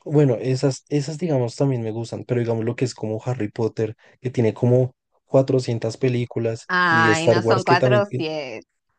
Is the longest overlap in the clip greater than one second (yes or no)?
yes